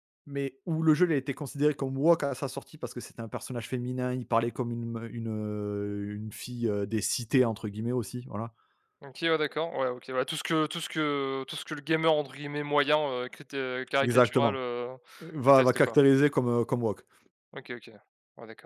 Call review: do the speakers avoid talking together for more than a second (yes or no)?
yes